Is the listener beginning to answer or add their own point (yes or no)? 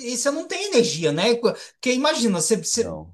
no